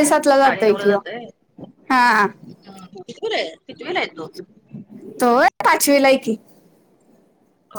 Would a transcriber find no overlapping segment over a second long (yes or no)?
yes